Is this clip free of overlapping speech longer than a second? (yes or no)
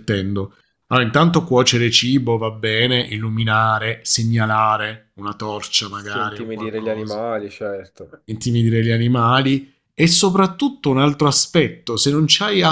no